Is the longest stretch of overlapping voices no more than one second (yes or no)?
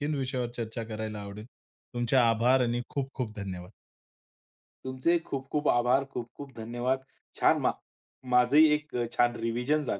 yes